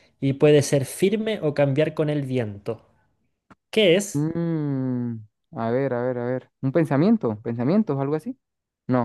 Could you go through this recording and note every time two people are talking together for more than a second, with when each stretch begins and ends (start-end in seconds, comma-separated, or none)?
none